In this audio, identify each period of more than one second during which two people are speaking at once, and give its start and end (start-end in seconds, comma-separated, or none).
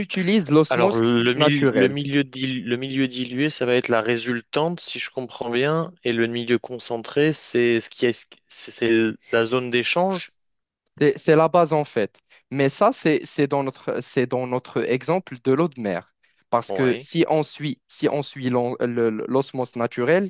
0.7-1.9